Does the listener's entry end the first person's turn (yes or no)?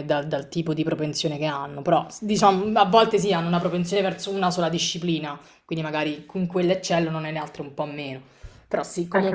yes